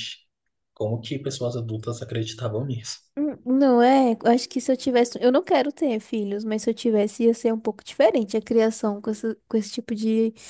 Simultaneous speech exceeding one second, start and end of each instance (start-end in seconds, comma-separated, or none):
none